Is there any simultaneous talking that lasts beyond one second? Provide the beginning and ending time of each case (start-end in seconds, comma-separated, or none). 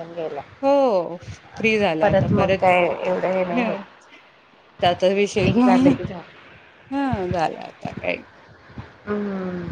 none